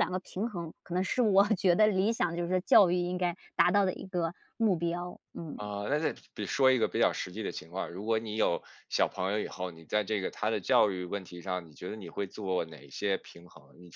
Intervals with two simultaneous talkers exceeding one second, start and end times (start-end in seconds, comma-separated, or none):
none